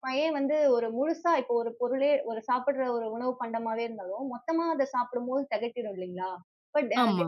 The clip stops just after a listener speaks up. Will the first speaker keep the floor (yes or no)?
yes